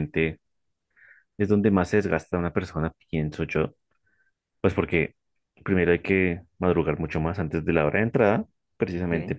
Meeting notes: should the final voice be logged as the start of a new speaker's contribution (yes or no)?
no